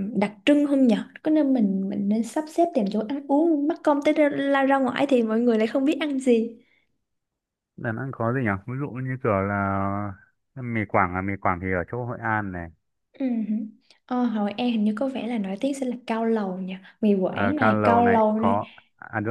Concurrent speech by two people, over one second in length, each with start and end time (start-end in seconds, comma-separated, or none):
17.3-18.6